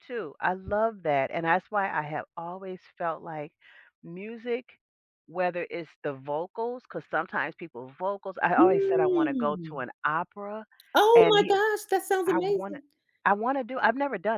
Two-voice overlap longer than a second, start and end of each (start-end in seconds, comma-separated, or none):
8.6-9.8